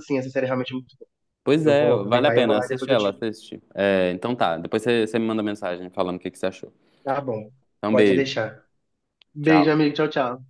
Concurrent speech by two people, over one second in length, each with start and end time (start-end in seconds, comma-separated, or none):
1.6-3.2